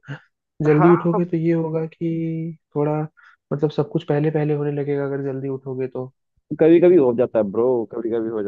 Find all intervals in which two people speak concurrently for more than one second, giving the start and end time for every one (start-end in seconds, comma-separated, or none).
none